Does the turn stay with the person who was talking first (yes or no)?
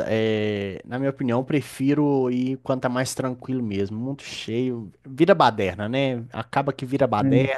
yes